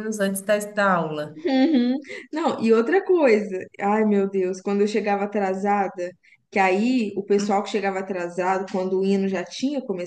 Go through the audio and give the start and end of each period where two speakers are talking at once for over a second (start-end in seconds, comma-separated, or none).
none